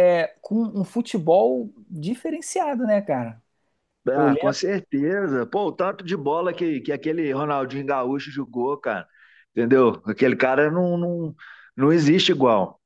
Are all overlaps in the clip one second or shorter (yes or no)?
yes